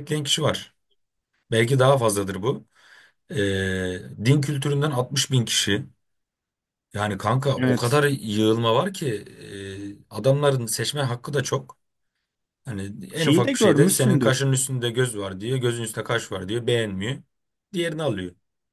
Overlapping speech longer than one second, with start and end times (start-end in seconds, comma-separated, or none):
13.2-14.4